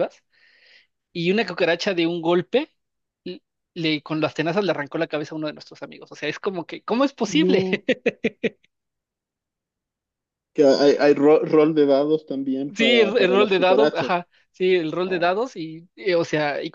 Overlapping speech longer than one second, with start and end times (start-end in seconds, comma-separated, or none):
12.8-14.2